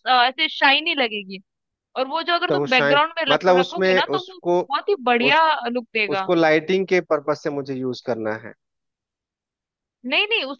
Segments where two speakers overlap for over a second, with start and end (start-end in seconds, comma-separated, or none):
2.5-4.6